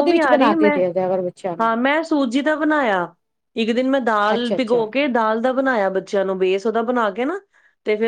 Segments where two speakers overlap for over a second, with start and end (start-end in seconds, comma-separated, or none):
none